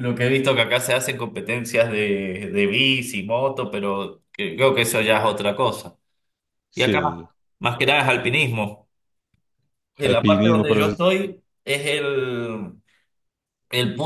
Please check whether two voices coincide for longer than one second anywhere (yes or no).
yes